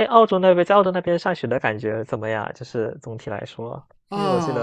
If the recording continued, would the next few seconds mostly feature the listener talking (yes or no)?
yes